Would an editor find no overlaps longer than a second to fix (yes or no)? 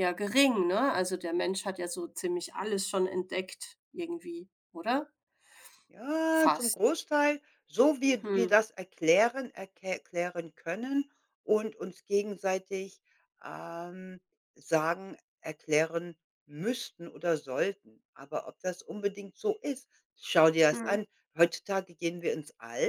yes